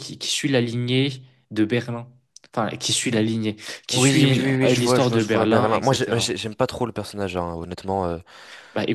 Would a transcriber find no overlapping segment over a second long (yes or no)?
no